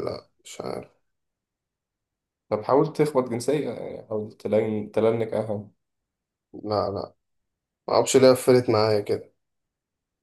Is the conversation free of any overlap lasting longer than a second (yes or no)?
yes